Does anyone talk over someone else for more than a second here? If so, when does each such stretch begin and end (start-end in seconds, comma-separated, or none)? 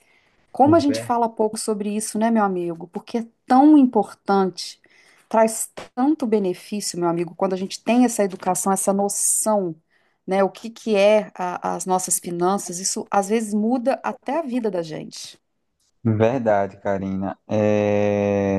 none